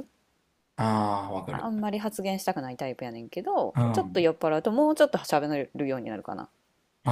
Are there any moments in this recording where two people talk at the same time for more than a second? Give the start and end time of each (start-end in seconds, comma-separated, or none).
none